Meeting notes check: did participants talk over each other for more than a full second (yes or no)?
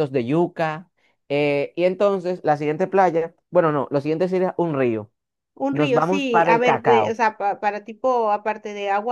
yes